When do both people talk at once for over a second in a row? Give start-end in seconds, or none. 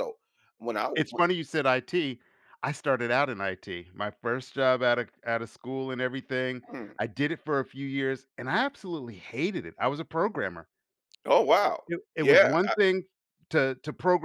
none